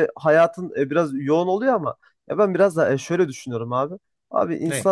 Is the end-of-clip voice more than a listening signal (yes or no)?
no